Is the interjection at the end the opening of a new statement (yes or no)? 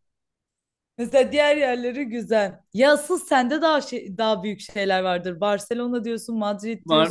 yes